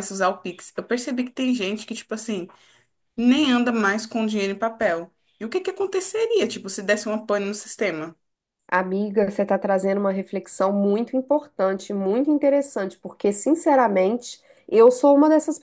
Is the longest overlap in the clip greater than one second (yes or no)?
no